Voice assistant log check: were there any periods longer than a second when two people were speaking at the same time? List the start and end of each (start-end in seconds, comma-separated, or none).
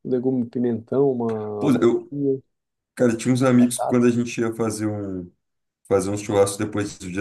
none